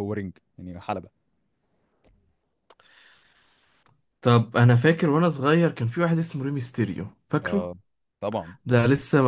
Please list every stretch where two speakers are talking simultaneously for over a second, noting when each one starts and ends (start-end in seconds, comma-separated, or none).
none